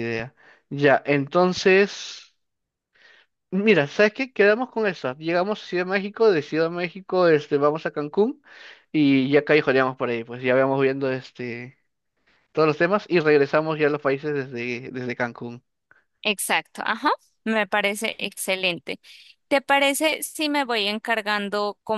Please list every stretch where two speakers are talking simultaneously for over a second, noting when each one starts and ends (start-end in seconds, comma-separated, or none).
none